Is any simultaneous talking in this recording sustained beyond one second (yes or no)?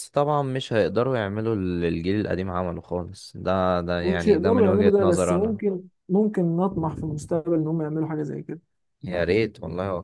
yes